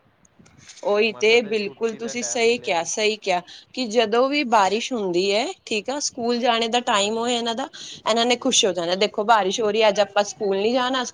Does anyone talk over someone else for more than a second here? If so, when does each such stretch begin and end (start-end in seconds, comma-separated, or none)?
1.1-2.9